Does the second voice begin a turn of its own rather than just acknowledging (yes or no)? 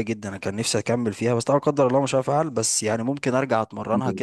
no